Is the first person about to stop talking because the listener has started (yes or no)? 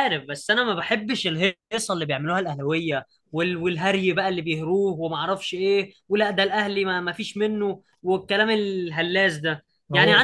no